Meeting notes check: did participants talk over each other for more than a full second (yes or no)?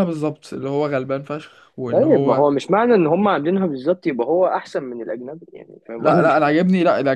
no